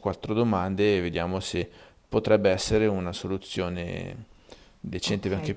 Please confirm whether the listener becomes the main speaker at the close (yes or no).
yes